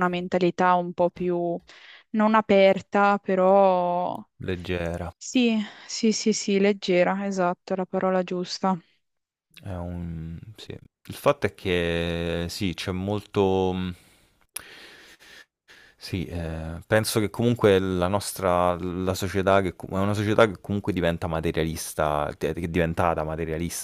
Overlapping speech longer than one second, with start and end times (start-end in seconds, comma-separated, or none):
none